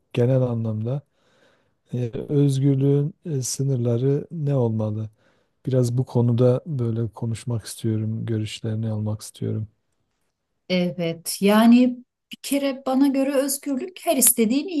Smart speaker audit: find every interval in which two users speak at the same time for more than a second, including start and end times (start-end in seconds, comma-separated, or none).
none